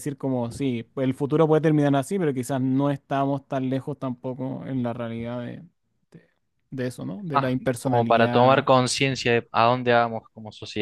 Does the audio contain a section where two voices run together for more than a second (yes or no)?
yes